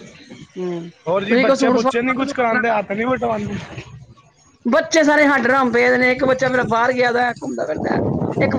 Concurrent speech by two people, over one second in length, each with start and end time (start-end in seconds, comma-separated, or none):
1.3-2.6